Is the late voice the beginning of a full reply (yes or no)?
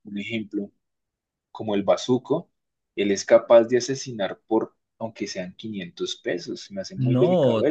yes